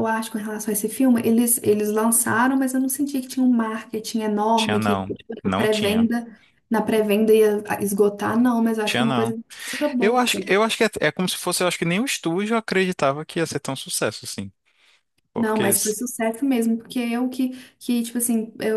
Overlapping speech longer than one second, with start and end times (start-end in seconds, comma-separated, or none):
4.5-6.1